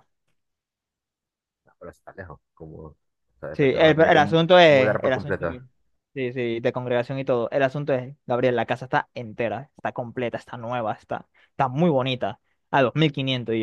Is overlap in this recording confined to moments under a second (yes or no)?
no